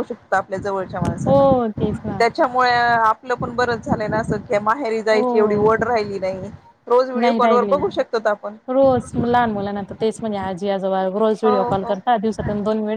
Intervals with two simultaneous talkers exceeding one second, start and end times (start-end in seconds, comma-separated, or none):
none